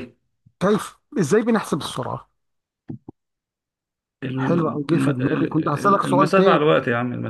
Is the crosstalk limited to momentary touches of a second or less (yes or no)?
no